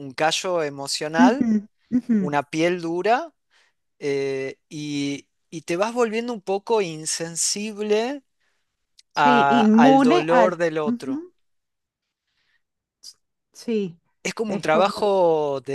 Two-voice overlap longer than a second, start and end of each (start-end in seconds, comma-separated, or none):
9.2-11.2